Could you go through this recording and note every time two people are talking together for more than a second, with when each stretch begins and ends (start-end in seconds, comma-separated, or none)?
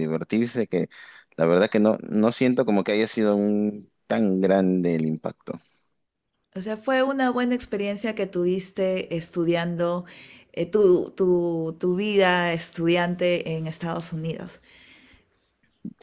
none